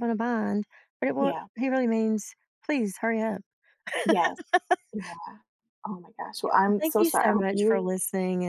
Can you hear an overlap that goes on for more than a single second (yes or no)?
yes